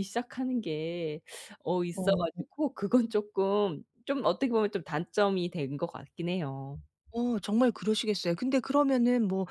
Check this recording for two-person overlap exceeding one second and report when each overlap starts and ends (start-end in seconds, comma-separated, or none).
none